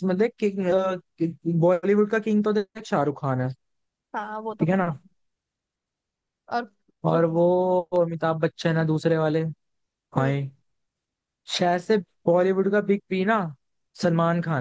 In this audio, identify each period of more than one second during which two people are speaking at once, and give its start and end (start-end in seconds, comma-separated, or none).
none